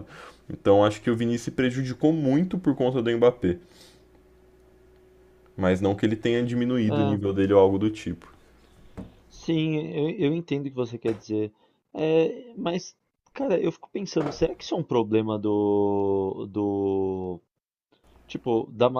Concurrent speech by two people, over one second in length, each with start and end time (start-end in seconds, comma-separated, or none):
none